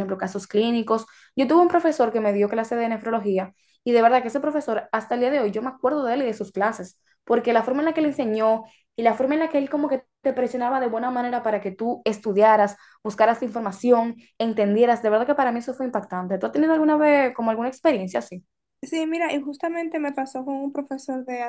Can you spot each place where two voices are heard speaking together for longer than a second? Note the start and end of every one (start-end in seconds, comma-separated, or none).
none